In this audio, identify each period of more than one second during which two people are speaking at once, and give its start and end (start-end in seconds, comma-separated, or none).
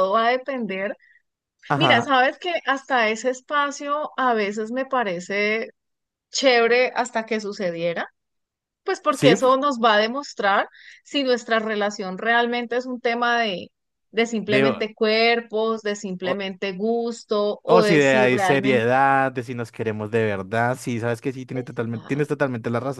17.6-18.9